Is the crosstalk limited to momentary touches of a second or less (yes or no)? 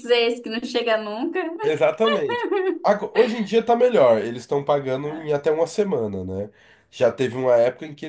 yes